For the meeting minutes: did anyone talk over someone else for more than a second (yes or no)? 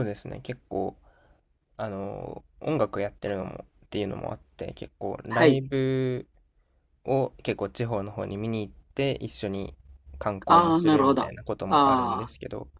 yes